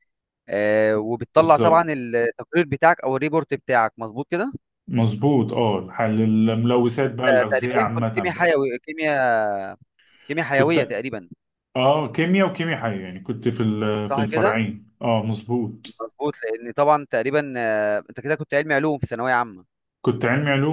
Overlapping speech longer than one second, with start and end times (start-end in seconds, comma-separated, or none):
7.0-8.5